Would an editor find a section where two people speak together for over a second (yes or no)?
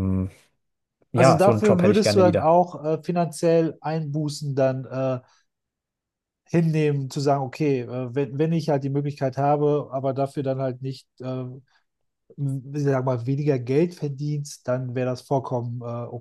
yes